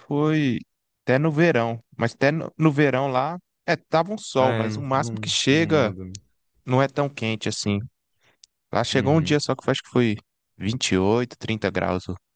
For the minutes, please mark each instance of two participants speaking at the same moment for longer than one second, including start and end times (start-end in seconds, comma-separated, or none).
4.4-6.0